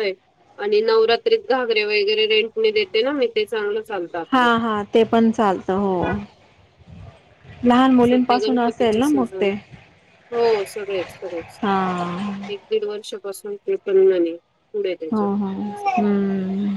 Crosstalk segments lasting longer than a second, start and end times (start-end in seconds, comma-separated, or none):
8.0-9.5